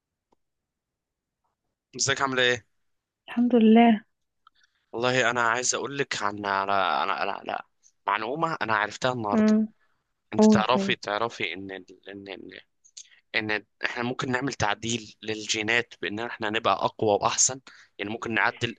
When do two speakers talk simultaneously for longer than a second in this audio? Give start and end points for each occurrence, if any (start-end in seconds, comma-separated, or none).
none